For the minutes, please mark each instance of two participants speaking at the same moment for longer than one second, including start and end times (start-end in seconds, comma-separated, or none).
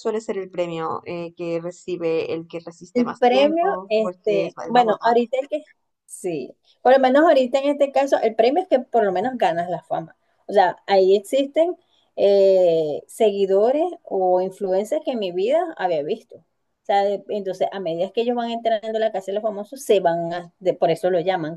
2.9-5.3